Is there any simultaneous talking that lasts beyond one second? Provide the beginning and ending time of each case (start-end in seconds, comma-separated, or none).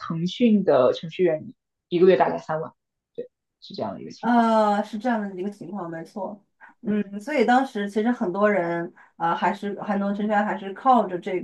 none